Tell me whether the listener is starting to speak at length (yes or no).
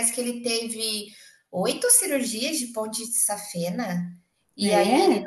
no